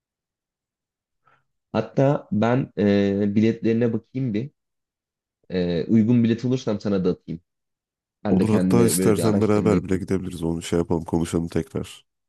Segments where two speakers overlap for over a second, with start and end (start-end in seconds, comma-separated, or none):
8.3-10.0